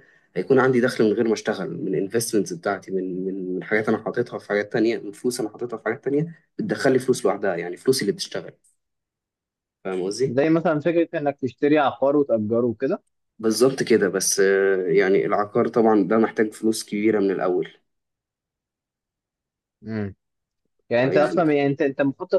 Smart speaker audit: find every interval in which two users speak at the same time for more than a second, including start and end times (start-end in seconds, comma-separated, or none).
none